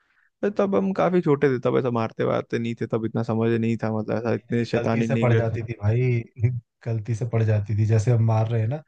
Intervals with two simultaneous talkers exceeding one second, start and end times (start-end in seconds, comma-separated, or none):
4.3-5.5